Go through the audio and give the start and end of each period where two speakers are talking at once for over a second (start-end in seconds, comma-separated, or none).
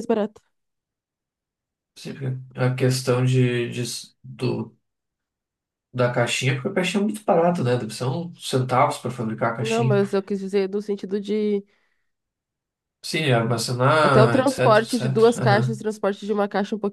14.0-15.8